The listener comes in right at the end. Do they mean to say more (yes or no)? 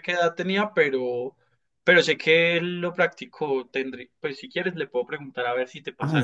yes